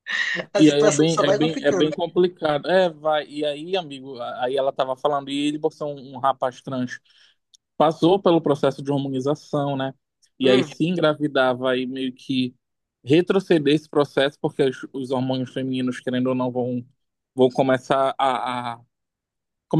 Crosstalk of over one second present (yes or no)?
yes